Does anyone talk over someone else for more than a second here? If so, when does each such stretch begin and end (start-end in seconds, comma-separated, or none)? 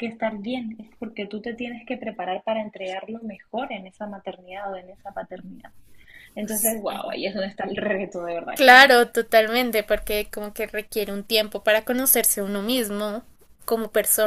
none